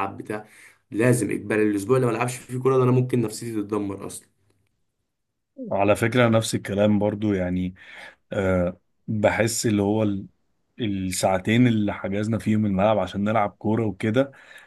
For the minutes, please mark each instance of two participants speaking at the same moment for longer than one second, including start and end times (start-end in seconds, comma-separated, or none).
none